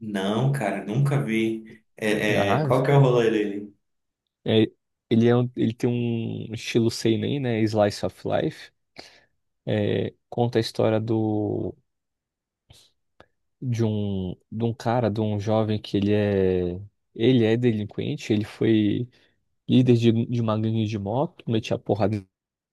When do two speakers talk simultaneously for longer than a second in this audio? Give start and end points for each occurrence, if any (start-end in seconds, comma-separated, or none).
none